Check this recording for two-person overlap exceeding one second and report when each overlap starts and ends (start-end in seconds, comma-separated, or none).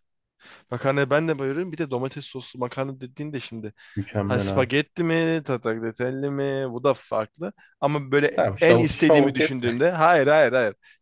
8.3-9.6